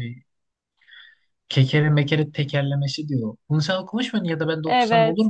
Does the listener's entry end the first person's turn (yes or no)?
yes